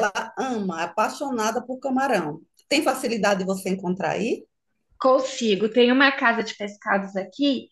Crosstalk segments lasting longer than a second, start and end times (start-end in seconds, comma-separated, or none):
none